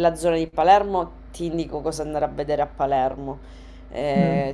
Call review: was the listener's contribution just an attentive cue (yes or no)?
yes